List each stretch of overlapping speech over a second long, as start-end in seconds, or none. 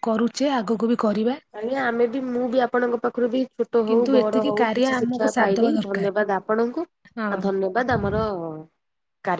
3.9-6.1